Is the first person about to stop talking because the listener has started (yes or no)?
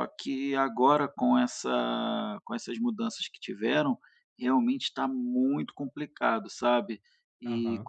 no